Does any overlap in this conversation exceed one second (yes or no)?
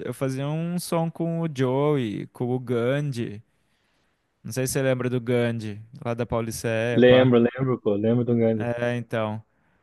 no